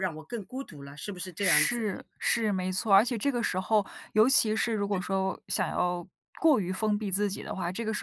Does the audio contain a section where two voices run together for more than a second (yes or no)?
no